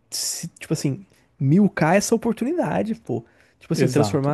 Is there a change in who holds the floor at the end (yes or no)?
no